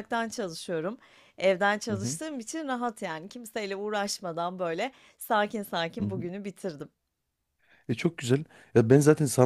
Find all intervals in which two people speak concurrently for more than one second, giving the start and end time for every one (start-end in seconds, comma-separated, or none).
none